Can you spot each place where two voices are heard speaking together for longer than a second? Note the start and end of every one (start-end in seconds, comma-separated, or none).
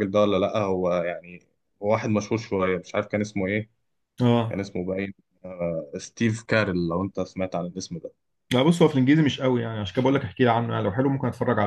none